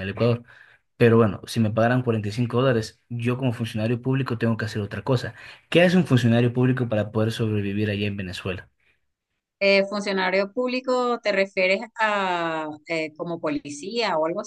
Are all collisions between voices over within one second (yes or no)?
yes